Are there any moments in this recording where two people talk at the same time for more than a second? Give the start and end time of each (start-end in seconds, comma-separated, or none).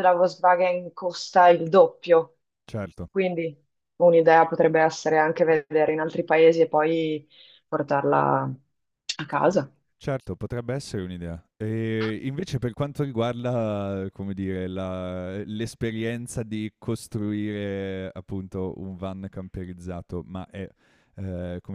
none